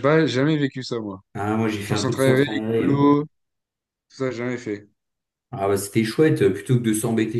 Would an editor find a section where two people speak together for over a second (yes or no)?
yes